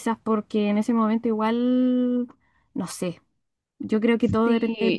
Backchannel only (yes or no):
no